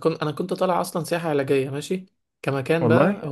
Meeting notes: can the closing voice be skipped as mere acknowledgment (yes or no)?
yes